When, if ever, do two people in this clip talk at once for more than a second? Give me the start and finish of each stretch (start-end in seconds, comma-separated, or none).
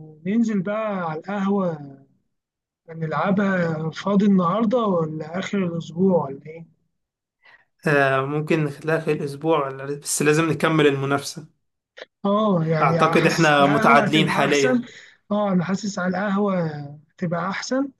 12.8-14.8